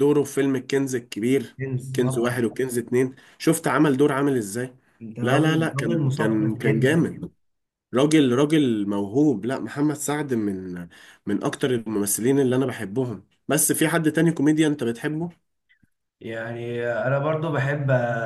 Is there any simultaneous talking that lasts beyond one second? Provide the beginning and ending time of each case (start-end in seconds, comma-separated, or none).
5.2-7.1